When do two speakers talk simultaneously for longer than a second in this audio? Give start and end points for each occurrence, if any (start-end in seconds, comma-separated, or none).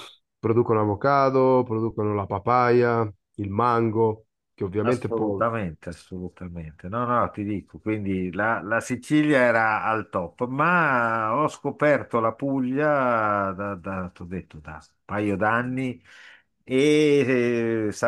none